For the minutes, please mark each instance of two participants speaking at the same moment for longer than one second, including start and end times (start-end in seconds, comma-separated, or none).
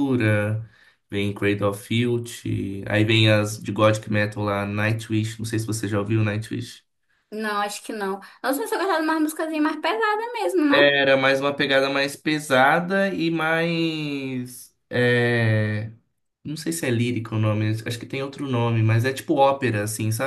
none